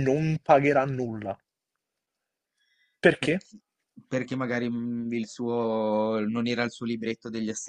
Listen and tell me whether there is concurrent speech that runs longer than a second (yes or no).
no